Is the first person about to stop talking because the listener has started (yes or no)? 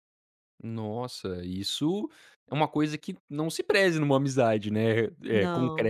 no